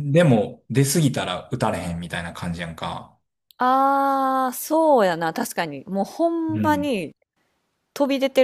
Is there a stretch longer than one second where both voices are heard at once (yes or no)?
no